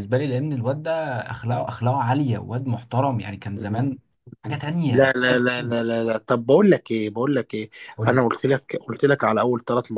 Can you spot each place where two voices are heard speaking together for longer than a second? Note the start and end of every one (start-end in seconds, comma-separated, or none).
4.4-6.0